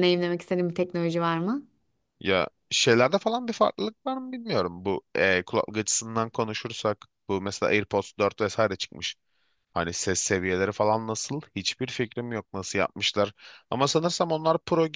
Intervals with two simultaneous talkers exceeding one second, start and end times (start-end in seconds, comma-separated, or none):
none